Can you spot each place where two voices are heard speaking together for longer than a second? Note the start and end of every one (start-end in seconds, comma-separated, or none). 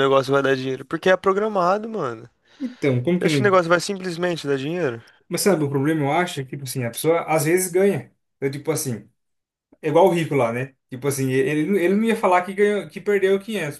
none